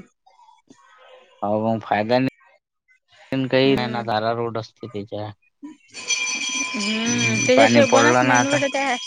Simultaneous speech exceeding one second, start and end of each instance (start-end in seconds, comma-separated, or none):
7.0-8.6